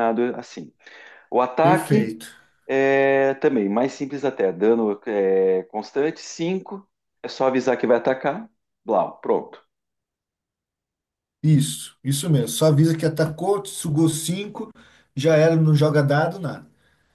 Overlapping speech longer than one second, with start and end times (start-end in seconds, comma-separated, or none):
none